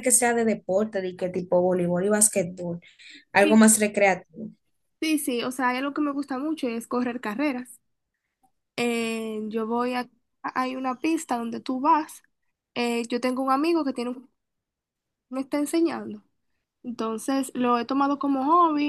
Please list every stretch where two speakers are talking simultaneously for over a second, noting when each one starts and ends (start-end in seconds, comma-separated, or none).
none